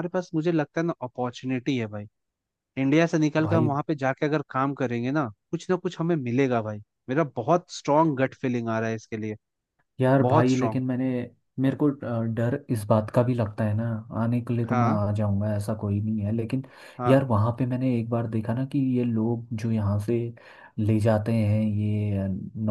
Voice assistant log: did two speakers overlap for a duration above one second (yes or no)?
no